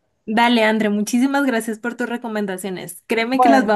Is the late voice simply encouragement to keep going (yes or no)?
yes